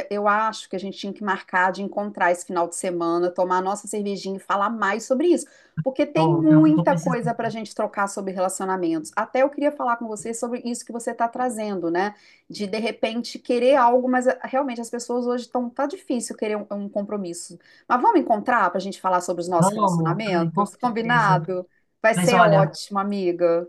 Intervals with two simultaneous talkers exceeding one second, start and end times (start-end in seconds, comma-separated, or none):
6.1-7.5, 19.6-21.4